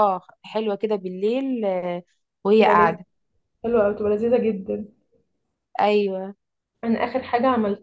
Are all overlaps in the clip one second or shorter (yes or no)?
yes